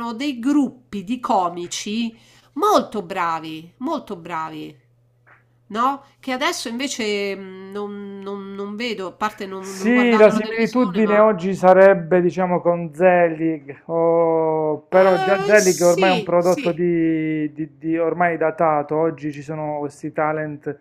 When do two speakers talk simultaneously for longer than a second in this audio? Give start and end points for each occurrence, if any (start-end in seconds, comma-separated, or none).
9.6-11.3, 14.9-16.7